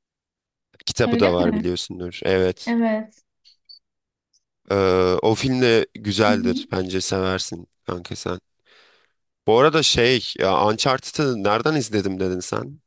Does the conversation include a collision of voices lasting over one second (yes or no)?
no